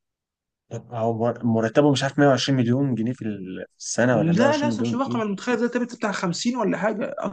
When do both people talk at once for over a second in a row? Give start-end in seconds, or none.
4.1-5.3